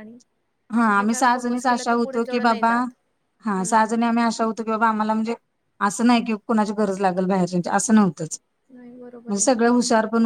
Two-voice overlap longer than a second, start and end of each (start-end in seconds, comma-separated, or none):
1.0-2.7